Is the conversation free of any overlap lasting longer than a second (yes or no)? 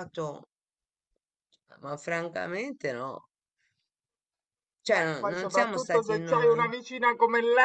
no